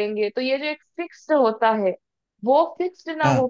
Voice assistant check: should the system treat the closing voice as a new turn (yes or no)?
no